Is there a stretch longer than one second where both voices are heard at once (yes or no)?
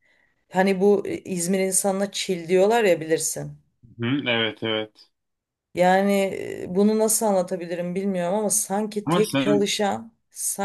no